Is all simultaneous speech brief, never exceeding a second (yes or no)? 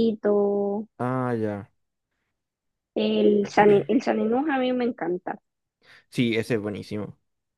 yes